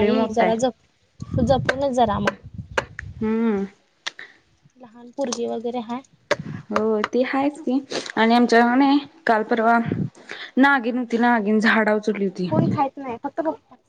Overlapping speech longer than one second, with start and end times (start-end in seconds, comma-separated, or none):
none